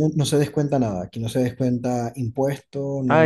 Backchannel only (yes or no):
no